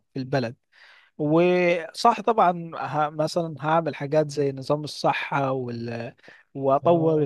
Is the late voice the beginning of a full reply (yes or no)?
no